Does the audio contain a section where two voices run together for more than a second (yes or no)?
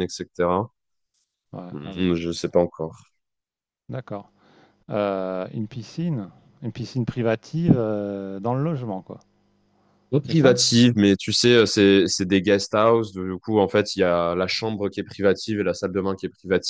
no